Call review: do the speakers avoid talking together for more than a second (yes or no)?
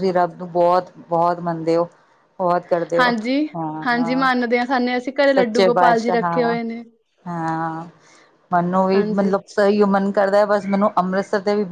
no